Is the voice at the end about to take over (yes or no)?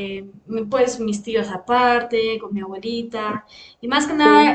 no